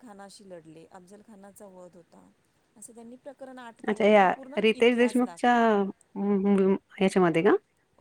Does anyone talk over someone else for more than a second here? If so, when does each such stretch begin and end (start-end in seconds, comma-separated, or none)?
3.9-5.5